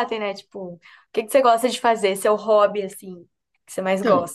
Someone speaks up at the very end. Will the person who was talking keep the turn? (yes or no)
no